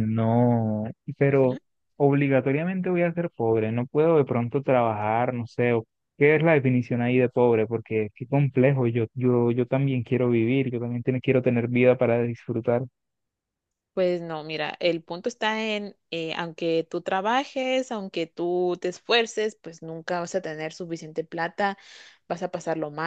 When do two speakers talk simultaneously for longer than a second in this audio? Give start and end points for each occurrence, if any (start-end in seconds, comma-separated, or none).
none